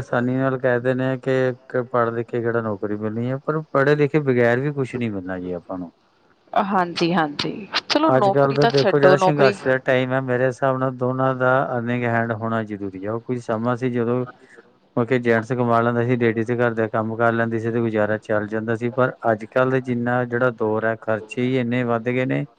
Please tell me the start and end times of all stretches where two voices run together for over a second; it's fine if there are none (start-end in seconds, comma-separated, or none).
8.2-9.6